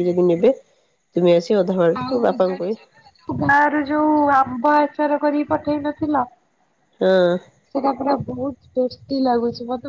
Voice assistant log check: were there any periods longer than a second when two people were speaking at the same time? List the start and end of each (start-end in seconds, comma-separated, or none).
none